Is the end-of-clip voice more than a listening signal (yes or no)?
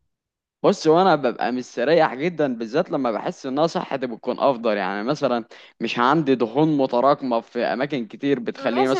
yes